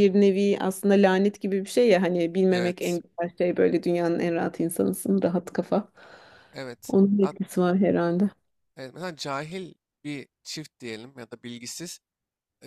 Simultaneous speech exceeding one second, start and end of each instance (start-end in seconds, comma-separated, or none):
none